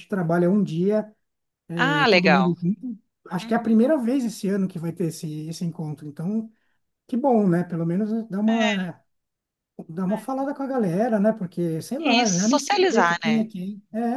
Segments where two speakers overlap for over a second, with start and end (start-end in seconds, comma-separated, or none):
12.0-13.5